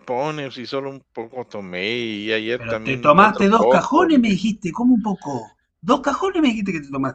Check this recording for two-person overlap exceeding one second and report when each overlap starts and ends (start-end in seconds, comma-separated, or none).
2.5-4.4